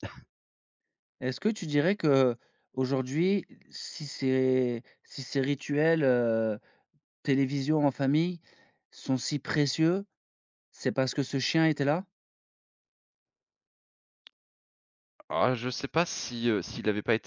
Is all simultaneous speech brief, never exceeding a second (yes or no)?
yes